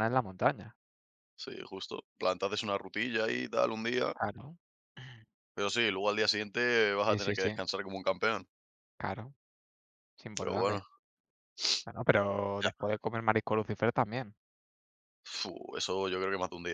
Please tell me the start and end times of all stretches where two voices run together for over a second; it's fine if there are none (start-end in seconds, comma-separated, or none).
none